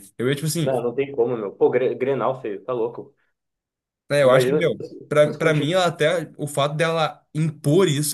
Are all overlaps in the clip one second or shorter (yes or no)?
no